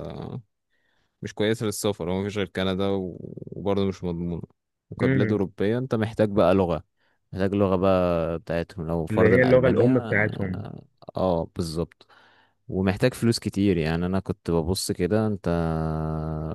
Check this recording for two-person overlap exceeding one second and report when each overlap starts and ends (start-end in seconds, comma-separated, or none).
9.1-10.7